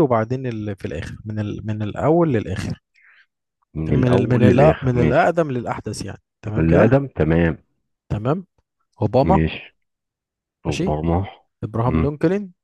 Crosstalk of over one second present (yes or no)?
yes